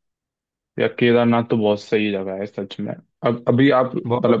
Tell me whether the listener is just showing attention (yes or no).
yes